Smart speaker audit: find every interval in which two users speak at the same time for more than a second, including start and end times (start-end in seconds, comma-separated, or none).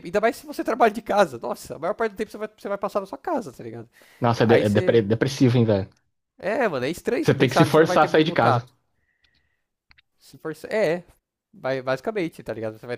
7.2-8.7